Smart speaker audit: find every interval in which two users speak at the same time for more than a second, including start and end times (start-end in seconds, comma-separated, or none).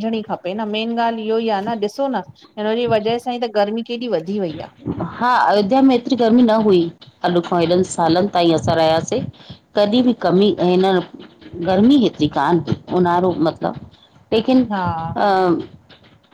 none